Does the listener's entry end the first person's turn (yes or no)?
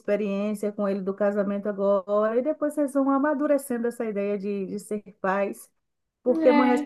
no